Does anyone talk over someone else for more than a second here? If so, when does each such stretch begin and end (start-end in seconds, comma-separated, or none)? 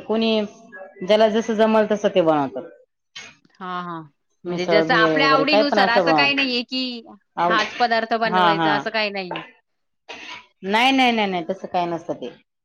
4.5-6.5